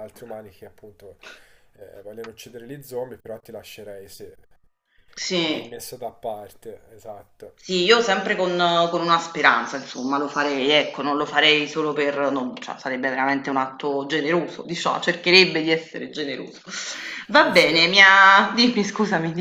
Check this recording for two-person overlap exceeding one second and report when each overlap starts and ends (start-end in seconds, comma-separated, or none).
none